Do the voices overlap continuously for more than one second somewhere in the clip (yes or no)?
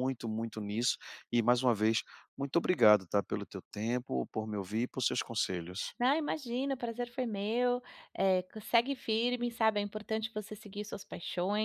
no